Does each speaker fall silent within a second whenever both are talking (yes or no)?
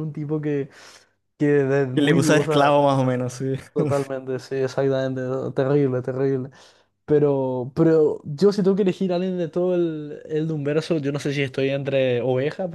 no